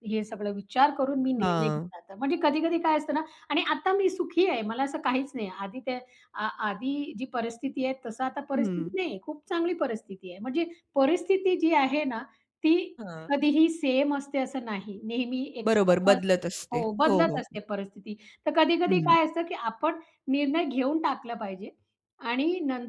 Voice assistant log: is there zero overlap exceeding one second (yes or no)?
no